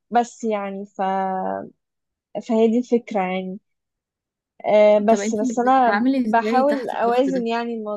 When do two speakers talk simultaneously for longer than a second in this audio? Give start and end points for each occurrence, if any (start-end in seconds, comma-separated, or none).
5.1-7.5